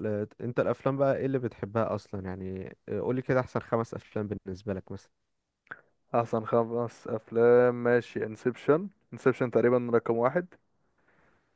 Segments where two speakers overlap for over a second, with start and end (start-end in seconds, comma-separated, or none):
none